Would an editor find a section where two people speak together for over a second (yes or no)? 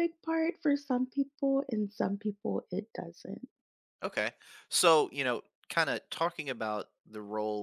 no